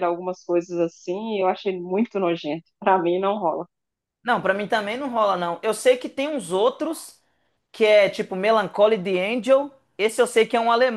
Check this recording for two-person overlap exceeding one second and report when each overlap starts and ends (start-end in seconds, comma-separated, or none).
none